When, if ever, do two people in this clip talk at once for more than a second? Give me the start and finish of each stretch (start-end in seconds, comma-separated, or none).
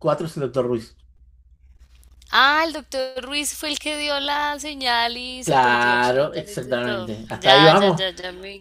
5.4-8.0